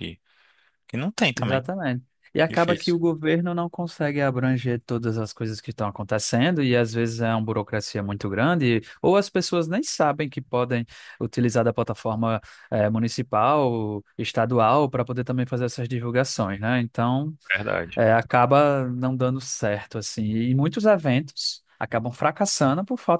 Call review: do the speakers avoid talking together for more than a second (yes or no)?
yes